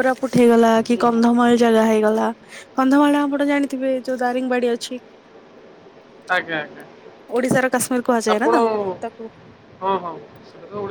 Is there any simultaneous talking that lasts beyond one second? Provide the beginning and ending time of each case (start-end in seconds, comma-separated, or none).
none